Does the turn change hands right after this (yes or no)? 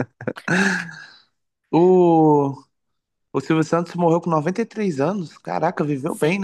yes